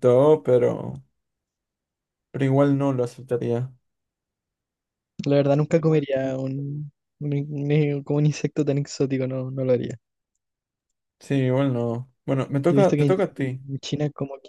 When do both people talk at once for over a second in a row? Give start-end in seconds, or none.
none